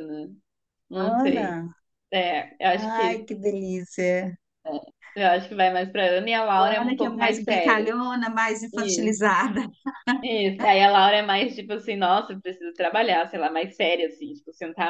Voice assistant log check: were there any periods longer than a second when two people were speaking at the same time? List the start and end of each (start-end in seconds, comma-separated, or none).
6.6-7.9